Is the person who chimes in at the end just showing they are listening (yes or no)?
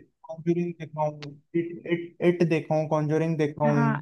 no